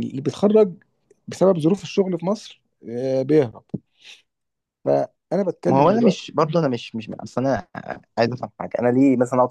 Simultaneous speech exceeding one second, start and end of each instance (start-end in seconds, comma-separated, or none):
none